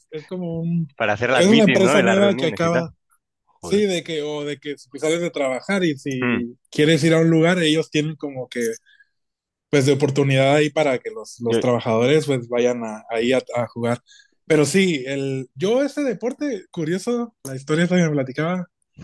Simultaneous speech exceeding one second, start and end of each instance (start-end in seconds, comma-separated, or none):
1.4-2.9